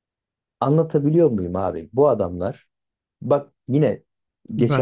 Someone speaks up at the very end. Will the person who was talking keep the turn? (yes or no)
no